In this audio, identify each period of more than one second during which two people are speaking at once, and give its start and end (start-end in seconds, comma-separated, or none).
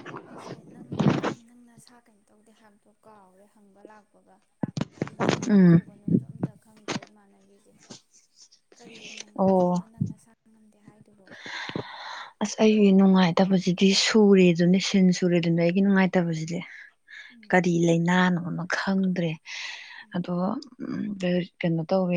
none